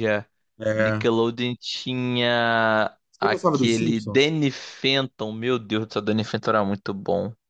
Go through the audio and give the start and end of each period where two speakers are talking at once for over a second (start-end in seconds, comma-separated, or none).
3.1-4.3